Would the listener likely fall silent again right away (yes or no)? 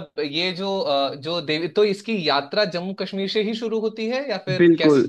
no